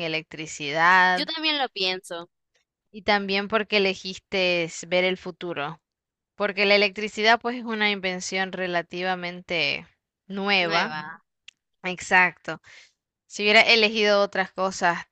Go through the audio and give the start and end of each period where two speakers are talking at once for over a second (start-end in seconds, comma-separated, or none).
none